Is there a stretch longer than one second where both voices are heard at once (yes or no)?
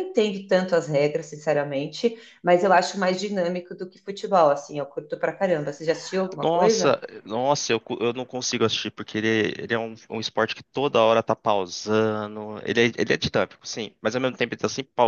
no